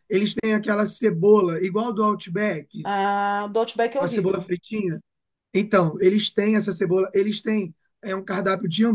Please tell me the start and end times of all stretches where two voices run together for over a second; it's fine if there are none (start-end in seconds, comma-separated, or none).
none